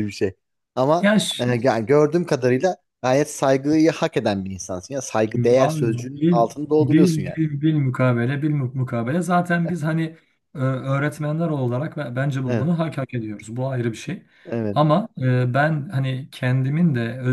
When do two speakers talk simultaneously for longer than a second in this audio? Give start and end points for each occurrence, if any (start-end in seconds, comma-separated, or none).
5.6-7.4